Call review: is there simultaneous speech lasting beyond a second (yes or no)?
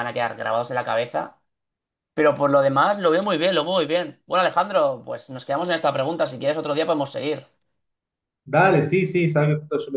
no